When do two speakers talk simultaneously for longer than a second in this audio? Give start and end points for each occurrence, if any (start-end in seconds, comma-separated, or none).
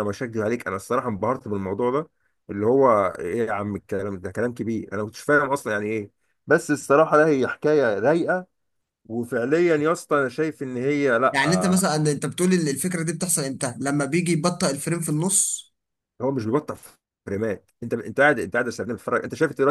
none